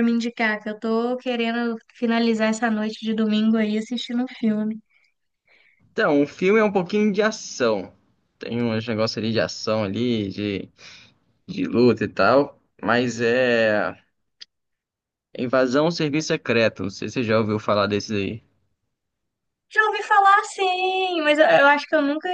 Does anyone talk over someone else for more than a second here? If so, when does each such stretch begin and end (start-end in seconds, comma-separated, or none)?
none